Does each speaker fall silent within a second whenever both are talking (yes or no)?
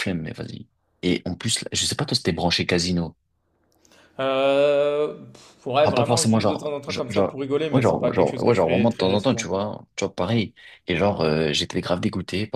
no